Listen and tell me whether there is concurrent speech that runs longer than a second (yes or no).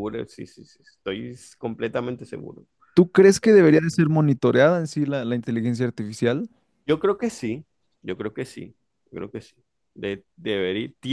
no